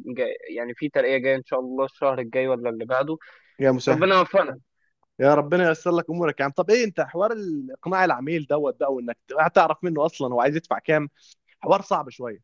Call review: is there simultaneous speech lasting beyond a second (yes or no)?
no